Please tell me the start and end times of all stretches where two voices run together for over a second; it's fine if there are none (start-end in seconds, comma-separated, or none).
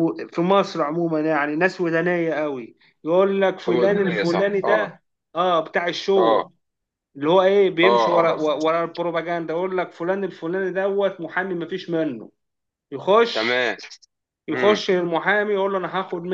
3.7-5.0